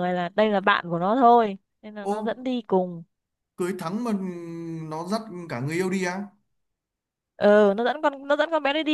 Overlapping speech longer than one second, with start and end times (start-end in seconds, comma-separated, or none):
none